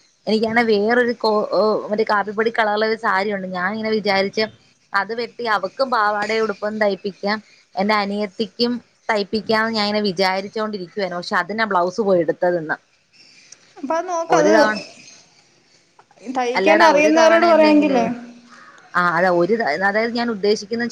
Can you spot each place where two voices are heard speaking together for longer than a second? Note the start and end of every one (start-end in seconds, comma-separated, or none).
16.6-18.0